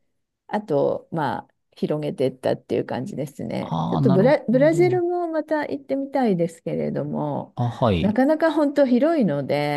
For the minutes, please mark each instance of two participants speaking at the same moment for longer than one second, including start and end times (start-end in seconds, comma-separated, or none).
3.6-5.0